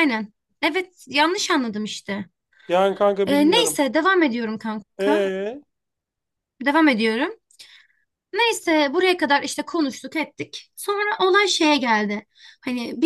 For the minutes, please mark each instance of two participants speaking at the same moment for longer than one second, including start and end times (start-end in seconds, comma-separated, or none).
none